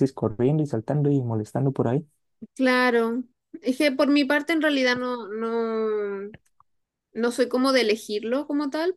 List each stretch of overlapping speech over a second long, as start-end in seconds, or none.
none